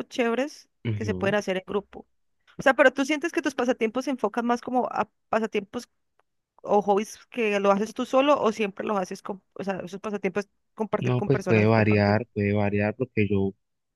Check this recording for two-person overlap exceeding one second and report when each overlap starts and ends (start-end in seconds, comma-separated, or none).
11.0-12.2